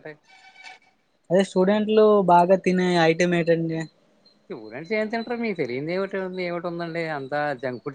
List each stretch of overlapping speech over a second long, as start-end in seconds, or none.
none